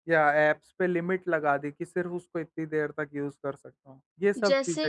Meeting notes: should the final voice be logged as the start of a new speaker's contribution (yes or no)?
yes